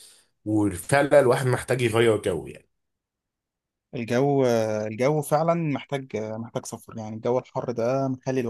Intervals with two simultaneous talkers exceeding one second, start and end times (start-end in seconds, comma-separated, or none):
none